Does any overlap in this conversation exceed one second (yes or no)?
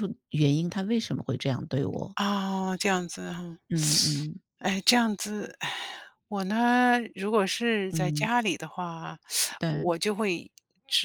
no